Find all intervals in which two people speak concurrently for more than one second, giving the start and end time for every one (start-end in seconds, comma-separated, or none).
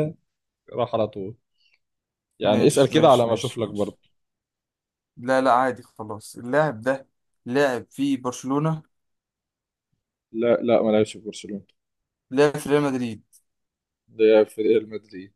2.5-4.0